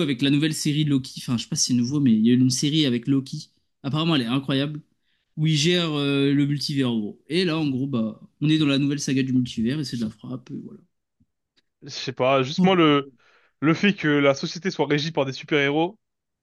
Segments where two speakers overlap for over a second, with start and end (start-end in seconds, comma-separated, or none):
none